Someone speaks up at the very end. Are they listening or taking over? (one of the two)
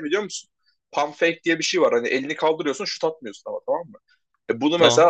listening